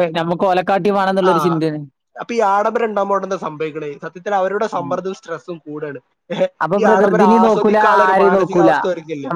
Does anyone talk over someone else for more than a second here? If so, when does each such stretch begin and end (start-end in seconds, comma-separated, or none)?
6.7-8.7